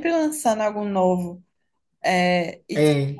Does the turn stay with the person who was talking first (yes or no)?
yes